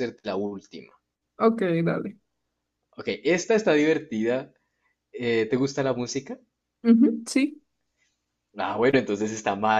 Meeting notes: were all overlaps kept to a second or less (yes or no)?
yes